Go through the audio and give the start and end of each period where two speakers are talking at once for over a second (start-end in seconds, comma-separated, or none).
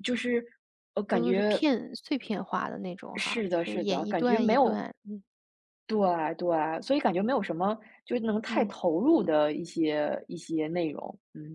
3.1-4.9